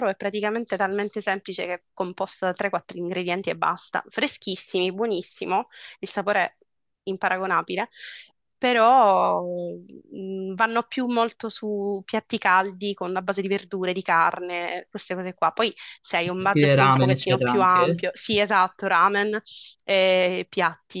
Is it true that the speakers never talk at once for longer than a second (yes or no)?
no